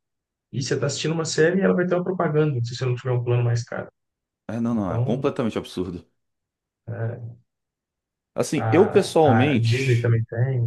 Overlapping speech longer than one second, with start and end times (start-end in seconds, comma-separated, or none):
8.5-10.2